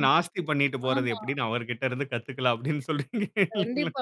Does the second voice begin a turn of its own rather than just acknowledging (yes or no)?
yes